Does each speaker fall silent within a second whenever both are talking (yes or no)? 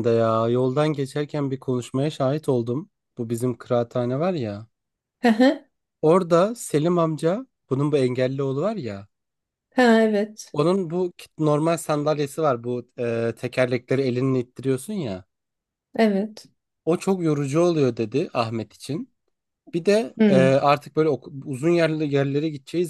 yes